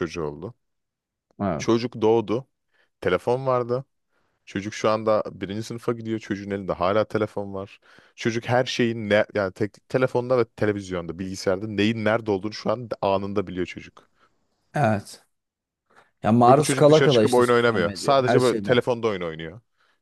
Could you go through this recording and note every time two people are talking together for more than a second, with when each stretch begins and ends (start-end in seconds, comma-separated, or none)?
16.5-18.8